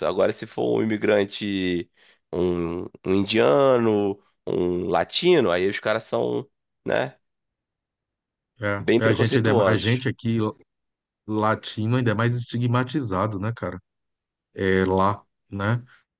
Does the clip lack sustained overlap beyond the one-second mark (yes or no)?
no